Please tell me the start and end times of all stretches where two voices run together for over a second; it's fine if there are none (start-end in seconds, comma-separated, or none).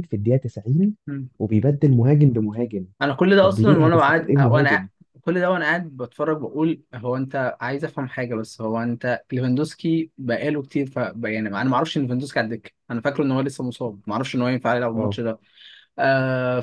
3.4-4.9